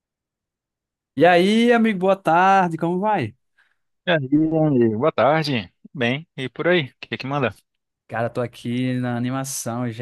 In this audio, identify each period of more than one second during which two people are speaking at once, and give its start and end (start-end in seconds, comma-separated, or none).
none